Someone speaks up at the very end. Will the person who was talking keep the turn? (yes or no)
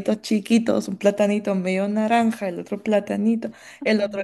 yes